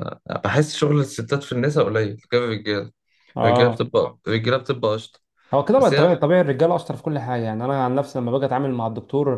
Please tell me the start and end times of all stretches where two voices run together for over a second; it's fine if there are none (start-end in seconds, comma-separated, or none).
none